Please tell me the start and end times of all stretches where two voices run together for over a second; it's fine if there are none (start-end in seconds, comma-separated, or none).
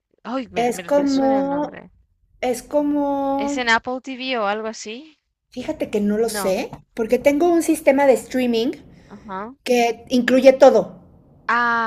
0.6-1.8